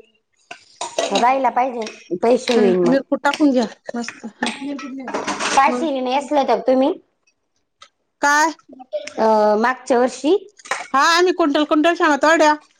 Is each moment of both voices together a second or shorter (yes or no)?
no